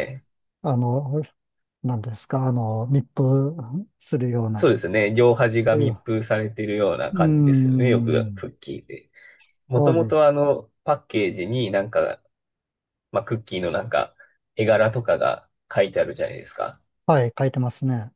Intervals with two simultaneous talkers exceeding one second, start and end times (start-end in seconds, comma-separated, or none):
7.1-8.4